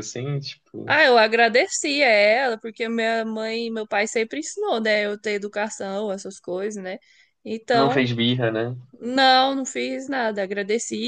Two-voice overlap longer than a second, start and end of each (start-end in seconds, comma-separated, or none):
none